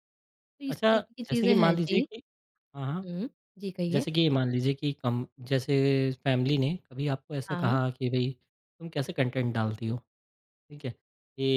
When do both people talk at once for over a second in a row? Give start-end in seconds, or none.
0.7-2.1